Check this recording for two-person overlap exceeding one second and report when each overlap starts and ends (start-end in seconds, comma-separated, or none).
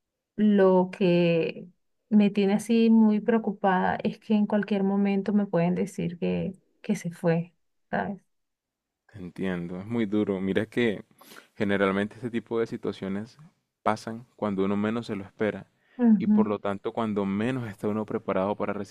none